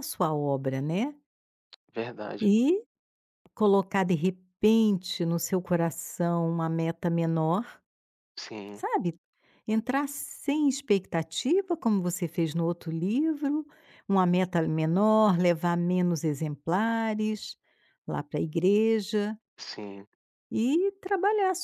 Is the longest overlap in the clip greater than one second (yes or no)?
no